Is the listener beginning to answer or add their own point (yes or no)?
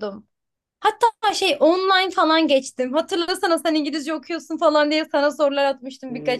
yes